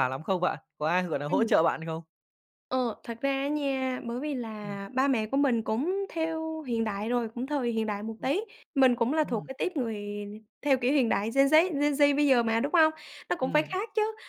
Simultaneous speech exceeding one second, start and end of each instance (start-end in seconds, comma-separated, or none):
none